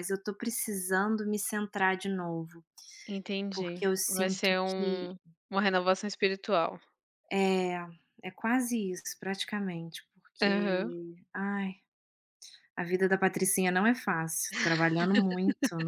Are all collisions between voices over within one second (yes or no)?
no